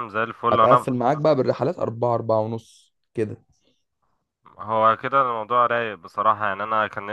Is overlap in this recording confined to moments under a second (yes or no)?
yes